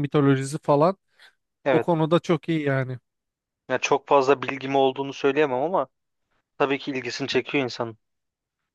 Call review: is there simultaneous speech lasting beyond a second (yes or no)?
no